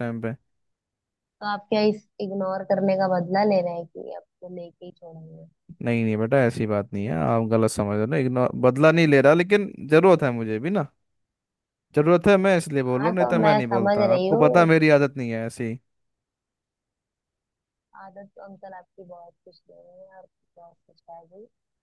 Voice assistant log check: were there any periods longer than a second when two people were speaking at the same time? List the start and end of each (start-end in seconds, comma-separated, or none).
12.9-14.7